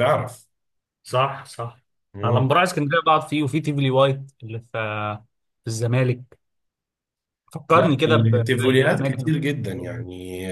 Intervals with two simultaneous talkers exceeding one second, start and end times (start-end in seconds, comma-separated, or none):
7.7-9.3